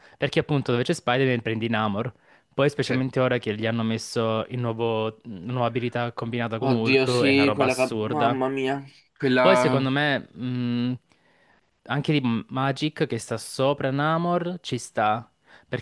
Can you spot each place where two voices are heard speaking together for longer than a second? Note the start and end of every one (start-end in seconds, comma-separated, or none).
6.6-8.4